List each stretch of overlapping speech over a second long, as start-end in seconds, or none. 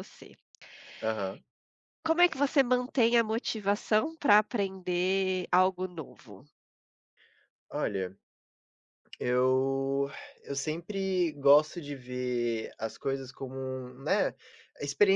none